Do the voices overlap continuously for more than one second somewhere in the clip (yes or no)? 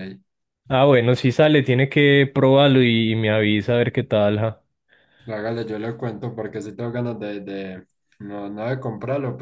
no